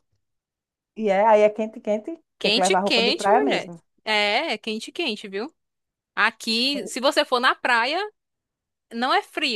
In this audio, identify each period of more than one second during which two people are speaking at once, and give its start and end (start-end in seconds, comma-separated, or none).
2.4-3.8